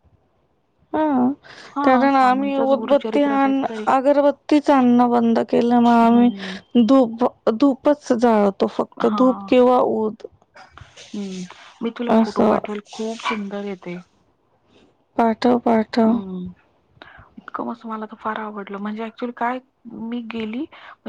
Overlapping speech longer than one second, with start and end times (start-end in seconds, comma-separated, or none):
1.8-3.8